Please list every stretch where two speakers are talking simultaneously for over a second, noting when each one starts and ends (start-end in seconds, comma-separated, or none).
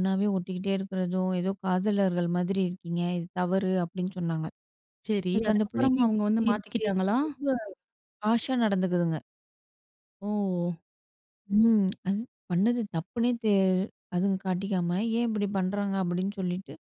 5.3-7.2